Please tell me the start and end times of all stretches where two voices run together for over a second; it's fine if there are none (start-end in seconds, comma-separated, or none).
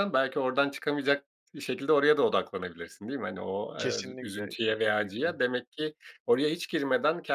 3.8-5.3